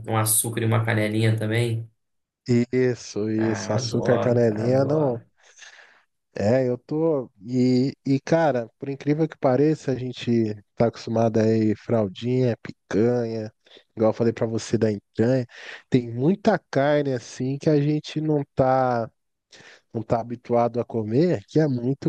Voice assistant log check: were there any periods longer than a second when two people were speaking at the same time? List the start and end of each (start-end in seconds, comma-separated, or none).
3.4-5.2